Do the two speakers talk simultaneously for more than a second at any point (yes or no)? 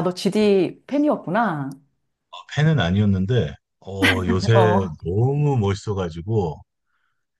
no